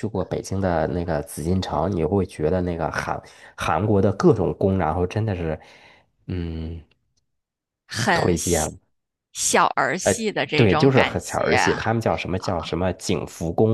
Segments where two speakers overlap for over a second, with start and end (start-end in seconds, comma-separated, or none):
10.5-11.9